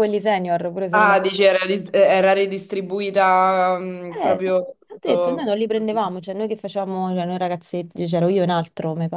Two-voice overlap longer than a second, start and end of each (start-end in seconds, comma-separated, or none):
4.2-6.1